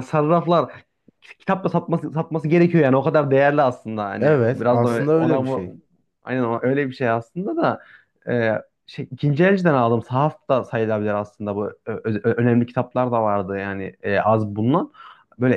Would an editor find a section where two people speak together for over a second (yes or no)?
yes